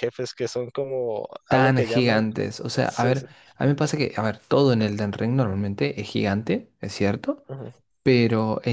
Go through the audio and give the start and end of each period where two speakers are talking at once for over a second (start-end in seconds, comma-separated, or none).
1.5-3.3